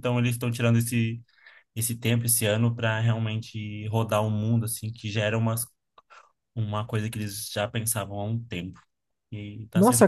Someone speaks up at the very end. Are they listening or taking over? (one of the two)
taking over